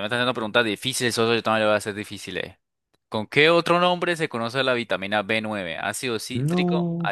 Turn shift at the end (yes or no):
no